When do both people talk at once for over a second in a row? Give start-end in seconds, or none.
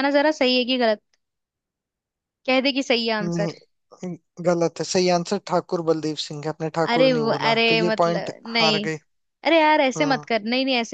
6.9-8.9